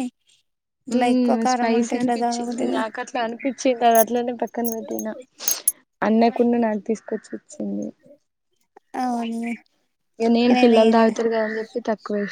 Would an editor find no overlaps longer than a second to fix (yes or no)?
no